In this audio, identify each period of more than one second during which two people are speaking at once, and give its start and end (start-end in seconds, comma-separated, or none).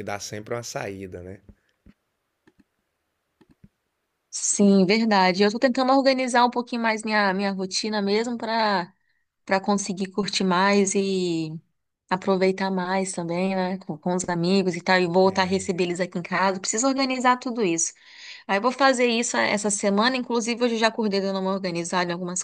none